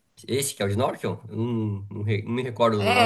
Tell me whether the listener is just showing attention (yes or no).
no